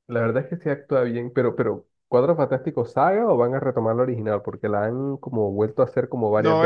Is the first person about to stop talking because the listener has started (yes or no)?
yes